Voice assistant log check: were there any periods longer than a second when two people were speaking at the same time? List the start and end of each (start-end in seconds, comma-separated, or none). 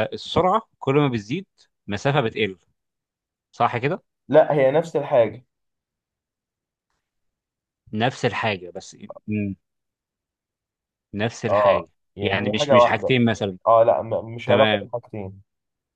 11.5-13.2